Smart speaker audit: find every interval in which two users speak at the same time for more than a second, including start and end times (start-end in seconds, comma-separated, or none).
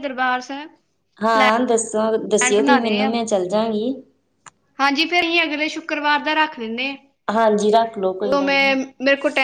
7.3-8.8